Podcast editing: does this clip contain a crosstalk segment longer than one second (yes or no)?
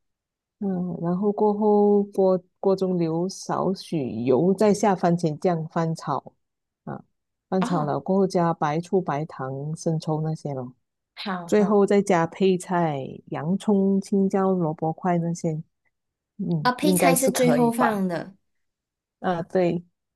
yes